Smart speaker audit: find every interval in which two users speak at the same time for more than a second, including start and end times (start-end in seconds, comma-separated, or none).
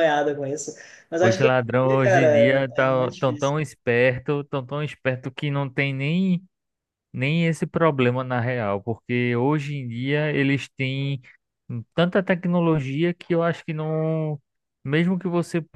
1.2-3.5